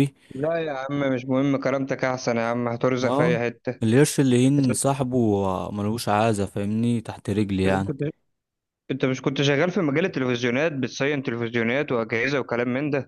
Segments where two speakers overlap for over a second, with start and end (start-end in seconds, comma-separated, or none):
none